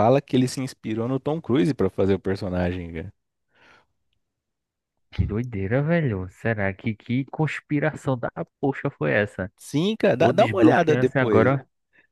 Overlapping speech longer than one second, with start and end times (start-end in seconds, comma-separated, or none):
10.2-11.5